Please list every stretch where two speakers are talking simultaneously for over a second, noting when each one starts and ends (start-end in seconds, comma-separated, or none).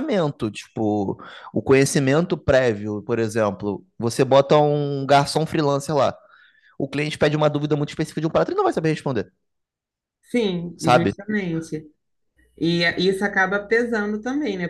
none